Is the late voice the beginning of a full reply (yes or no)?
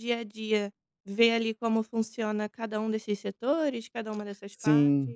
yes